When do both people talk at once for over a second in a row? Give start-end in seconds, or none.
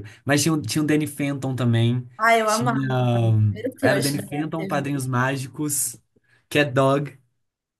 3.8-5.0